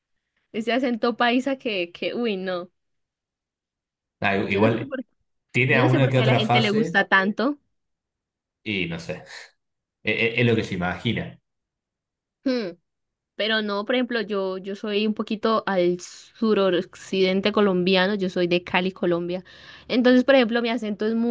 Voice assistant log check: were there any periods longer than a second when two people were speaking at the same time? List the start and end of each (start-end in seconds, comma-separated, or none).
5.7-7.0